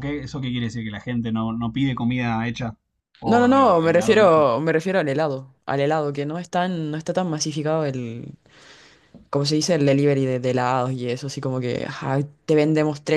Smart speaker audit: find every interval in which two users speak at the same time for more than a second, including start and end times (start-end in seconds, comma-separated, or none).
3.3-4.5